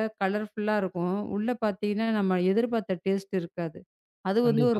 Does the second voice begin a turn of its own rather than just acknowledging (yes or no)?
no